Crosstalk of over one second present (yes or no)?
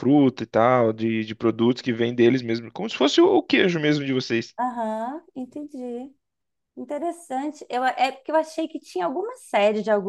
no